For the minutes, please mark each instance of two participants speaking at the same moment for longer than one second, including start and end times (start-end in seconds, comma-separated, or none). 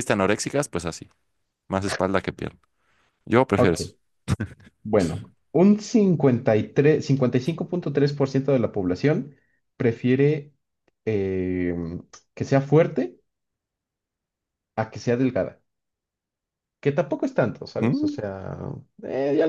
none